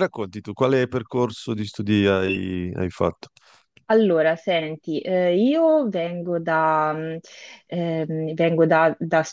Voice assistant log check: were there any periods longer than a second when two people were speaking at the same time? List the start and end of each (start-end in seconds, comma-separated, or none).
none